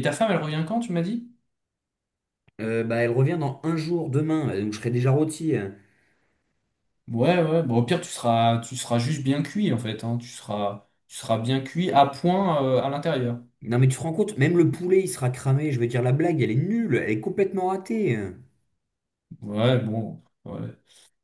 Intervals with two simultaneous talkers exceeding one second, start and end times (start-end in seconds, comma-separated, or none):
none